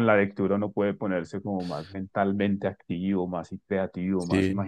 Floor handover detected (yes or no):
yes